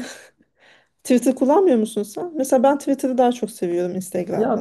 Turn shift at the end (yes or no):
yes